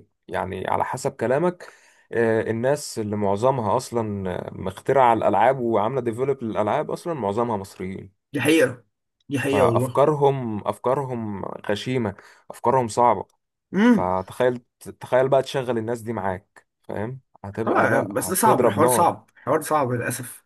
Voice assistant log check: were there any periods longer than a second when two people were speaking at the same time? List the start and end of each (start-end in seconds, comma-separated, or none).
17.6-19.1